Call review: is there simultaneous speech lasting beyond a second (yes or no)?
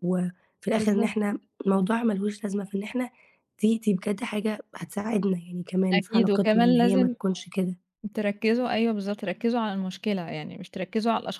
yes